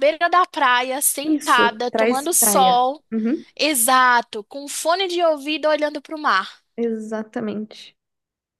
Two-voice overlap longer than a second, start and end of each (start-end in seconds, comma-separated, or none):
1.2-3.0